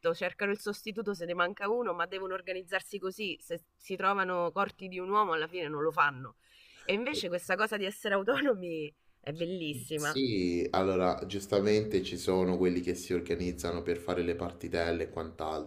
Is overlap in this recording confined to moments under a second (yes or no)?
yes